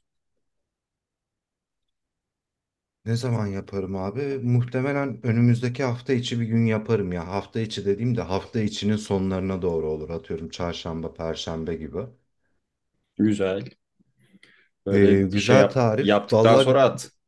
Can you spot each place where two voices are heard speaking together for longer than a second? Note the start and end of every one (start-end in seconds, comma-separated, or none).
14.9-16.7